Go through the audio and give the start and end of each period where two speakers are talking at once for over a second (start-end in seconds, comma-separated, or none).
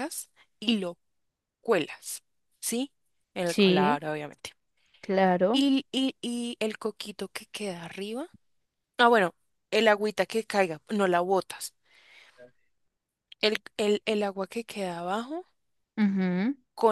none